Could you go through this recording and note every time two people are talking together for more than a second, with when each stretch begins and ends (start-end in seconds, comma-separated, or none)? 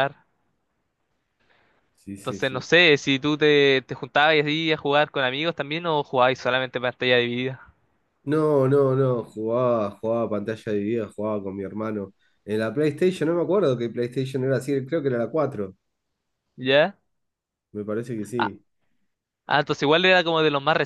none